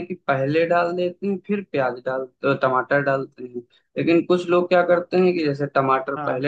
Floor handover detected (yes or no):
no